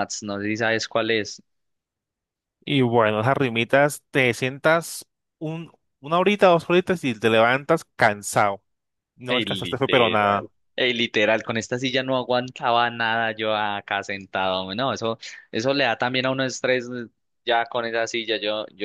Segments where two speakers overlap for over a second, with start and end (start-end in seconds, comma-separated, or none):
9.2-10.5